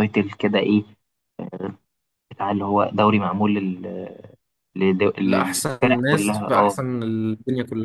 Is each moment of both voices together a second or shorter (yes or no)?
no